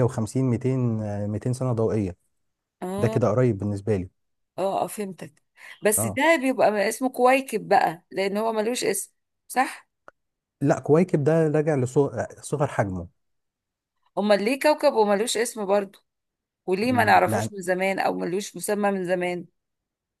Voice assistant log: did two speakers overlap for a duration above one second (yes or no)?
no